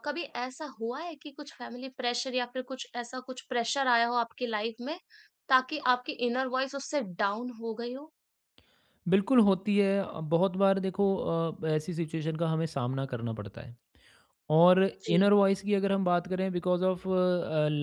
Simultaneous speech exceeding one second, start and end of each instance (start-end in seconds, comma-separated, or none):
none